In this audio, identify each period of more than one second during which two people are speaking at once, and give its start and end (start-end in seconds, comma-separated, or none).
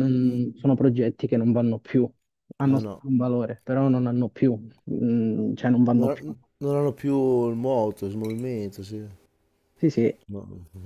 none